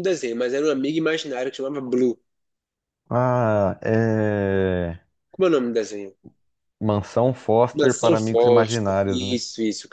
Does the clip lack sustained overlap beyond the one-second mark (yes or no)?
no